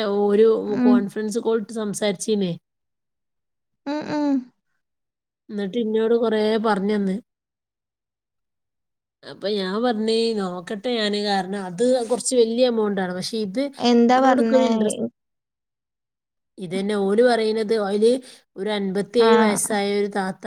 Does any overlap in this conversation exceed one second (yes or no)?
no